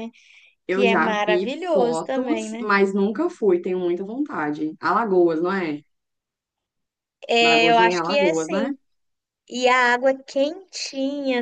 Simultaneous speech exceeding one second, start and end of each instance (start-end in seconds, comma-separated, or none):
0.7-2.6, 7.4-8.7